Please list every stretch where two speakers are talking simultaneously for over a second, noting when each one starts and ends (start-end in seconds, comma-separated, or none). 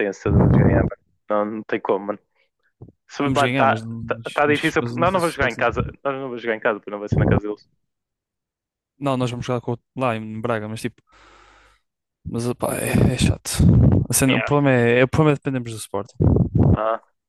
3.2-5.7